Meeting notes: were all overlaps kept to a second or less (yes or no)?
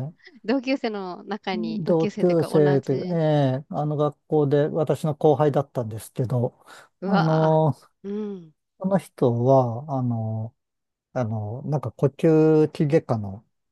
no